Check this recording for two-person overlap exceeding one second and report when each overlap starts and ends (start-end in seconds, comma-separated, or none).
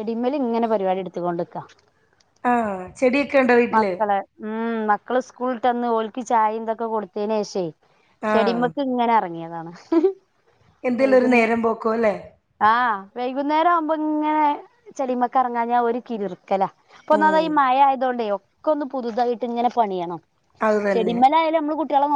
none